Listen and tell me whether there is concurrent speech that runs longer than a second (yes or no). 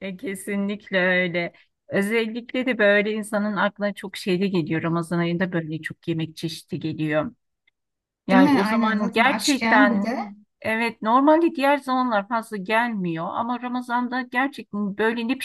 yes